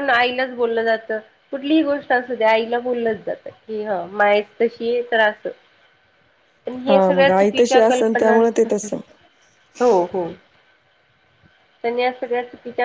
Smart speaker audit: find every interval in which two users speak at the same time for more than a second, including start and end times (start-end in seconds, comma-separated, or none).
6.9-8.4